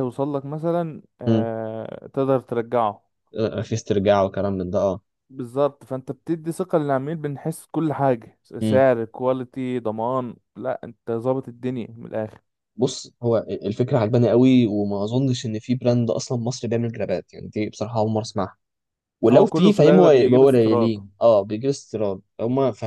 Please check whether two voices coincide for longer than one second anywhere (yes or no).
yes